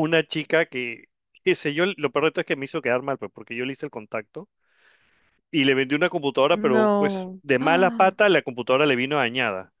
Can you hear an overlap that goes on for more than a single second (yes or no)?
yes